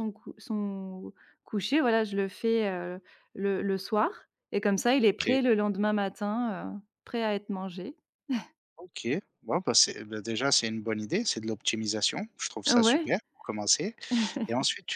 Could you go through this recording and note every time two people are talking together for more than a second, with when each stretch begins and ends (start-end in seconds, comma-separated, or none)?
none